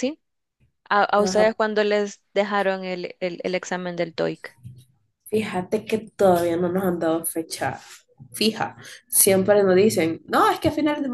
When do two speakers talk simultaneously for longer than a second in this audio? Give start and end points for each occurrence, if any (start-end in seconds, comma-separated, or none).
none